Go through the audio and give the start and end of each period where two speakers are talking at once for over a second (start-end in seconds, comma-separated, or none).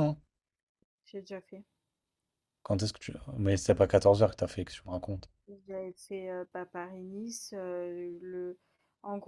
none